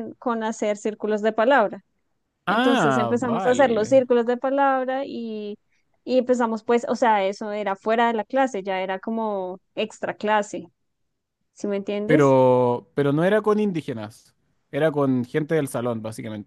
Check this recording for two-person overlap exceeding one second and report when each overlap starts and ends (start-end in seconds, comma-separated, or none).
2.5-4.0